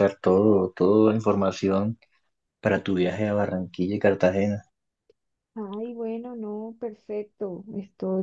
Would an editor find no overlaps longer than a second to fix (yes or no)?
yes